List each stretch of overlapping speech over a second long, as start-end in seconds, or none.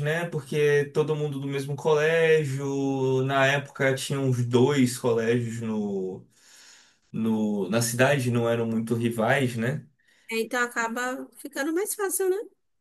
none